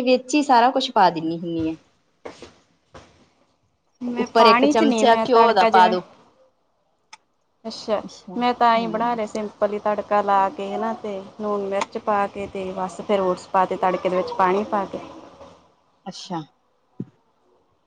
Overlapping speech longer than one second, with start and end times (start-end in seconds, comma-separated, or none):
4.2-6.0